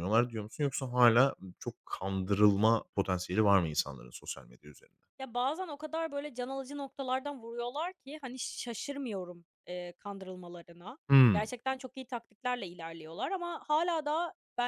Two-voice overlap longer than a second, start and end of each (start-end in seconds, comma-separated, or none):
none